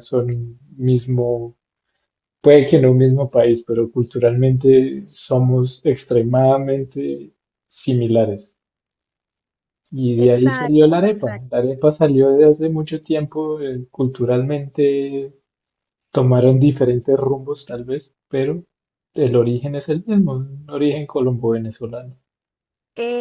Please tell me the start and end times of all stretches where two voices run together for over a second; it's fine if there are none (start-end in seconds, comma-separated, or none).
10.2-11.6